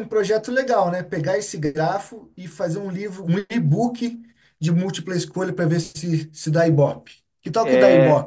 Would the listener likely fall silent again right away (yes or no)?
no